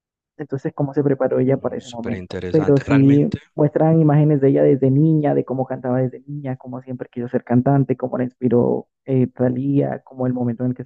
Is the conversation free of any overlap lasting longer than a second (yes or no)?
no